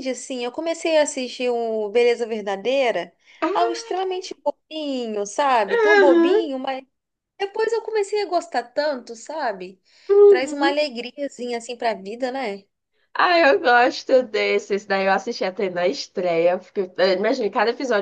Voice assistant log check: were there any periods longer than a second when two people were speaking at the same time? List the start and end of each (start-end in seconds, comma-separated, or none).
none